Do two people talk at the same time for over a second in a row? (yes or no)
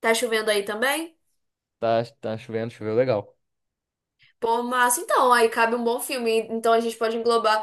no